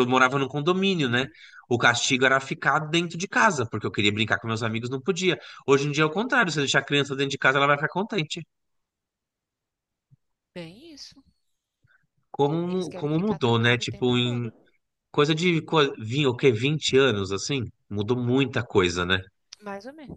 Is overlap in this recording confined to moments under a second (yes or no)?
no